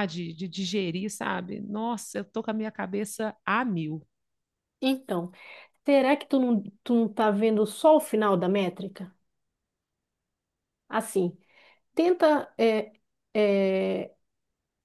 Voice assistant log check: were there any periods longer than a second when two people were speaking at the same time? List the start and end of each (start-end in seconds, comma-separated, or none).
none